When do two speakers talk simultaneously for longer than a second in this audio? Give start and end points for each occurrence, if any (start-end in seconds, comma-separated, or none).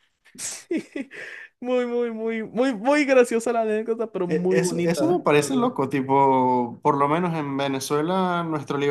4.3-5.7